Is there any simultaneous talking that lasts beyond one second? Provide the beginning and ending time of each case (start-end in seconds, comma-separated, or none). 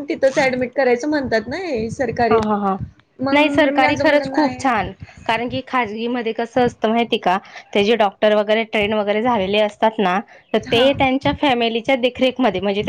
3.3-4.6